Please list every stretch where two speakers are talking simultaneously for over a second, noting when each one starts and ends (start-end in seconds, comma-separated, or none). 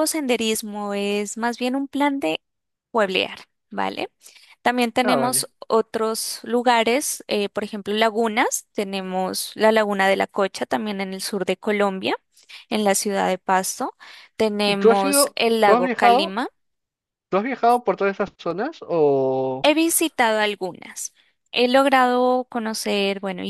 14.6-16.4